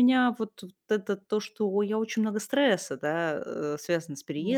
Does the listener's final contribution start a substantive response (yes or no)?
no